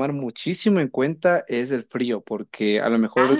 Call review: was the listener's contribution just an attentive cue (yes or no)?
yes